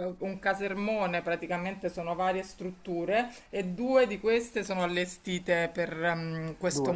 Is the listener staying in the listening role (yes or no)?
yes